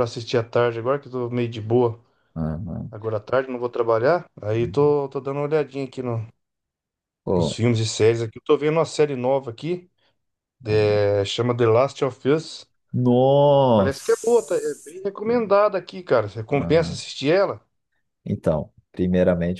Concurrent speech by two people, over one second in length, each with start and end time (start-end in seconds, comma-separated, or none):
none